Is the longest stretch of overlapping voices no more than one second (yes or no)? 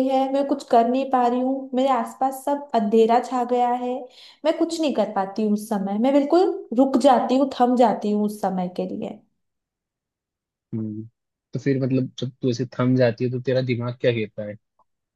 yes